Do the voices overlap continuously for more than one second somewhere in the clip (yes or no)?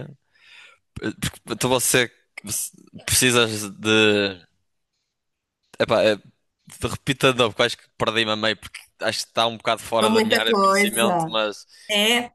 yes